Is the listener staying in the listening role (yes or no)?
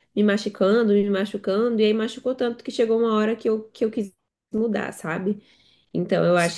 yes